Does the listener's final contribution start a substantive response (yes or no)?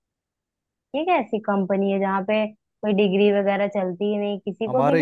yes